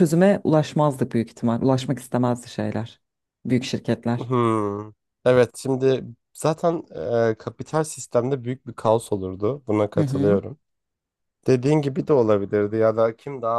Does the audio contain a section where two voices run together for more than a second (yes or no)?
no